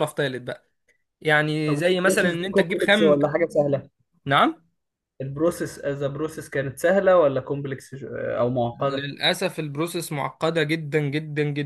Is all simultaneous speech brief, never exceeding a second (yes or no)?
no